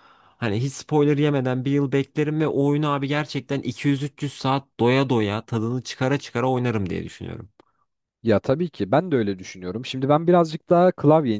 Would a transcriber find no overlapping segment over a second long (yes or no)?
yes